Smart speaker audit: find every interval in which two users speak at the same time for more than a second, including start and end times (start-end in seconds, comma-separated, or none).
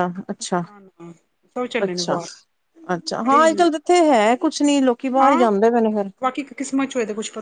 none